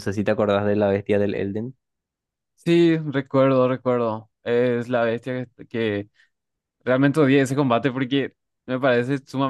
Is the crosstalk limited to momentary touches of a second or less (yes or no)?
yes